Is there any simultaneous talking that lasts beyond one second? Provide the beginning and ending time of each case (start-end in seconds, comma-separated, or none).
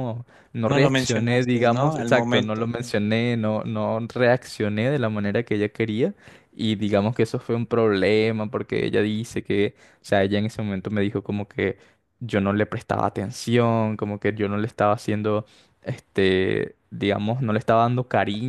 0.7-2.7